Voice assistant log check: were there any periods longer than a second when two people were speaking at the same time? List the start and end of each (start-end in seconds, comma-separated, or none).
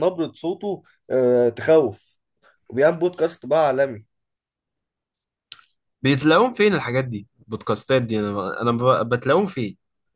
none